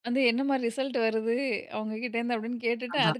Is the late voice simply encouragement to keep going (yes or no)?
yes